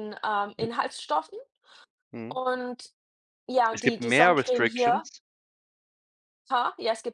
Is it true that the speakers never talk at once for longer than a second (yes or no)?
no